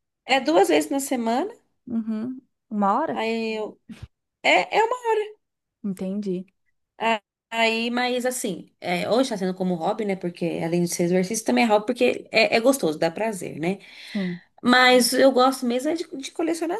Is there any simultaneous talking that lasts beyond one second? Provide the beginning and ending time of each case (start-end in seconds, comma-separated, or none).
none